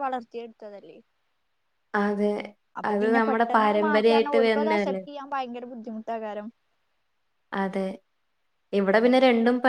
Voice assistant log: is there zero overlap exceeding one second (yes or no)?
no